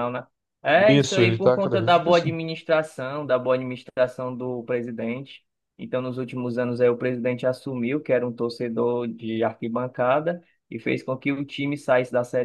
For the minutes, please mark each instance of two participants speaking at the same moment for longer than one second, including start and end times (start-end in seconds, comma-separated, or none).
0.7-2.4